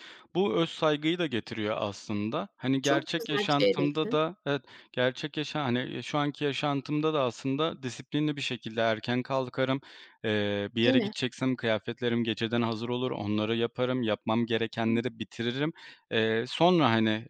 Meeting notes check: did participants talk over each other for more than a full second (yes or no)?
yes